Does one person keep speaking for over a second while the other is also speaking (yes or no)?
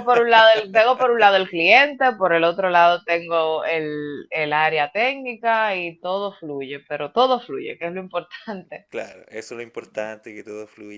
no